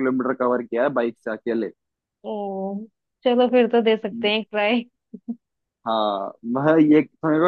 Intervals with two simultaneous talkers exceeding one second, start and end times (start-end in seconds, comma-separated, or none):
none